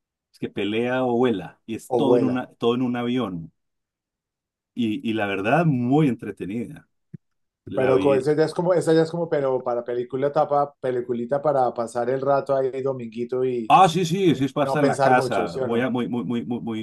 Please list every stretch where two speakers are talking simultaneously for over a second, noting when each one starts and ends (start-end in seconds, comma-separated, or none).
14.3-15.9